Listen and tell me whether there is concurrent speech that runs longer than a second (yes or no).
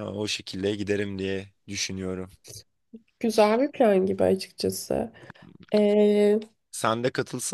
no